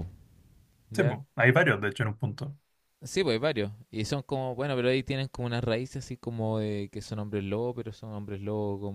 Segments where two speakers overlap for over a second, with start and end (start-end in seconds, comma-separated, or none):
none